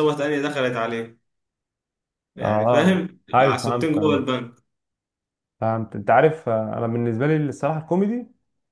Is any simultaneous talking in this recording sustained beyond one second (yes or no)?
yes